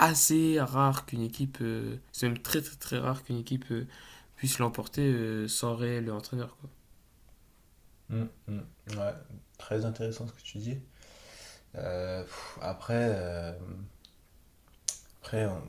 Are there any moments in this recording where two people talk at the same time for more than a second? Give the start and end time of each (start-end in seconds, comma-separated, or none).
none